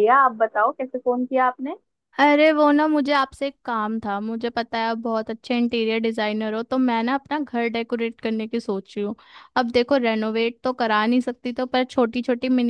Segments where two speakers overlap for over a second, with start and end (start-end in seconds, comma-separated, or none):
none